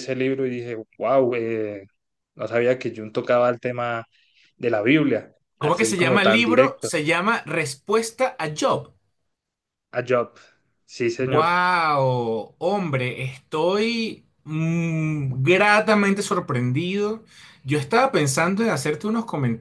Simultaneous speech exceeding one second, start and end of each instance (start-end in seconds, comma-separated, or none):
5.6-6.9